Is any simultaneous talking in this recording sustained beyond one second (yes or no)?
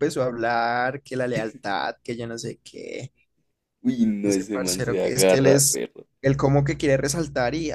yes